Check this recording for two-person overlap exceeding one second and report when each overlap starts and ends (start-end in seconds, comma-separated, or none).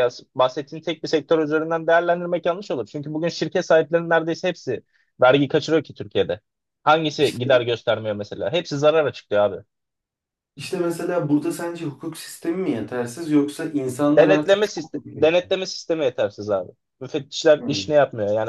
14.1-15.3